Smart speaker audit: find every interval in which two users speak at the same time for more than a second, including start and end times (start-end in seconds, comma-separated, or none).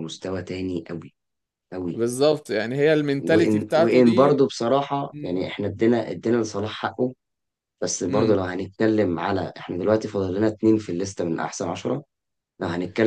3.2-4.4